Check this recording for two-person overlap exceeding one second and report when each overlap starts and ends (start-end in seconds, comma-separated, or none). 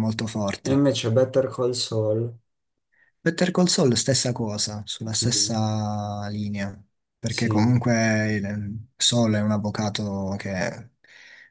none